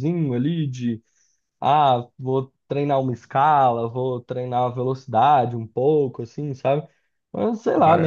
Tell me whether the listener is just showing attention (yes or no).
yes